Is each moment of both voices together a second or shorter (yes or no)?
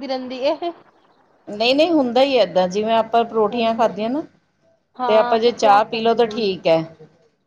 no